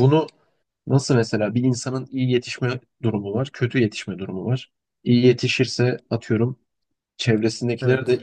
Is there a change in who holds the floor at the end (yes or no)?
no